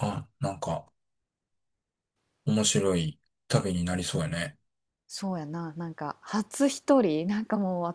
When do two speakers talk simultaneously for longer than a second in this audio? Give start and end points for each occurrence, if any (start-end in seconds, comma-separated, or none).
none